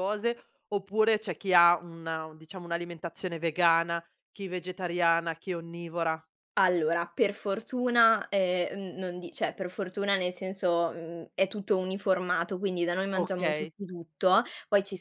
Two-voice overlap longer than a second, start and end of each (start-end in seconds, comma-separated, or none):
none